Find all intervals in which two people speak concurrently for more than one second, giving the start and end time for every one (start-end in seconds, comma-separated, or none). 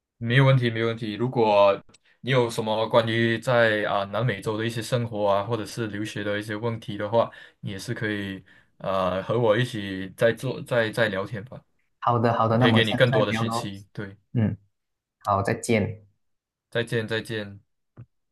12.5-13.7